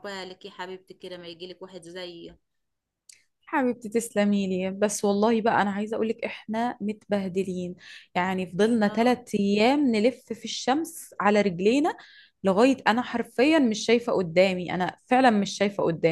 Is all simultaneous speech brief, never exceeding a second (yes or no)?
yes